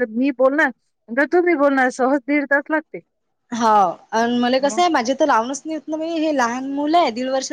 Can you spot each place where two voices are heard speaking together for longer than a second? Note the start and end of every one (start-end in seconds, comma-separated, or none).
none